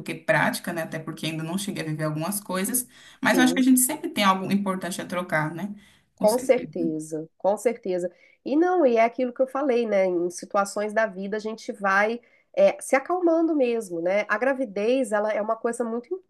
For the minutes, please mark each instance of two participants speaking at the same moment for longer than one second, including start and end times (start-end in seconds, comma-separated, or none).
none